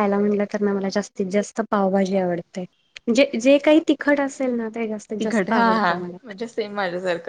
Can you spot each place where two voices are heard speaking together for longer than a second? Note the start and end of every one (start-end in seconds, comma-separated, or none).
none